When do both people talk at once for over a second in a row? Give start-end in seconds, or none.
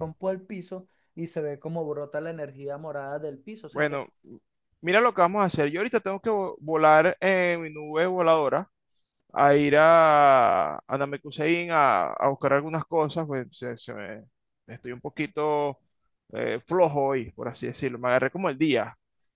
none